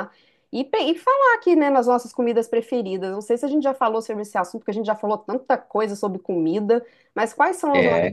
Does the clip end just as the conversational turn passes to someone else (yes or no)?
yes